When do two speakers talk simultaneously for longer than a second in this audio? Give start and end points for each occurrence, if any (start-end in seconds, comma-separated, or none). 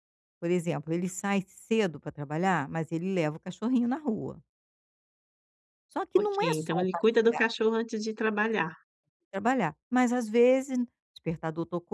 6.1-7.5